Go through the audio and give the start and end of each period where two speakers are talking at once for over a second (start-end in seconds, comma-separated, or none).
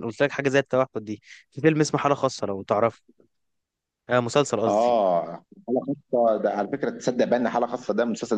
none